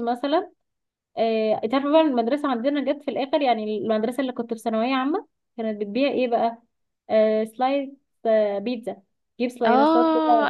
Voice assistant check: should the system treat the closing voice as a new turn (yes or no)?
yes